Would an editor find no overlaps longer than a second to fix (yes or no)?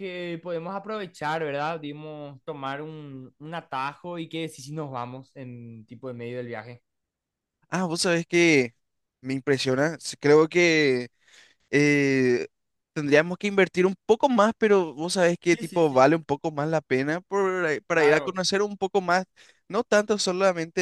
yes